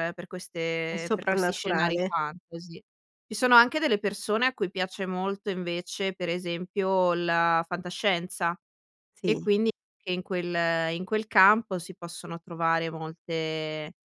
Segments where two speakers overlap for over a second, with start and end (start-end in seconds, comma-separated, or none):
0.9-2.1